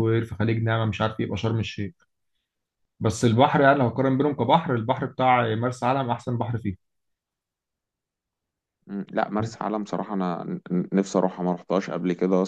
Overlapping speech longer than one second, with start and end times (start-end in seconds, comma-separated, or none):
none